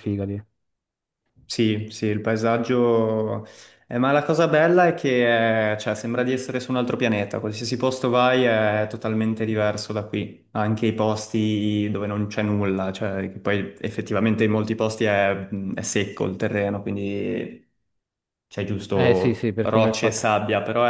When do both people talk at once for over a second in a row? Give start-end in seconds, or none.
18.9-20.3